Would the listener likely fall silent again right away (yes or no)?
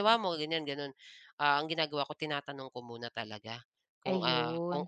yes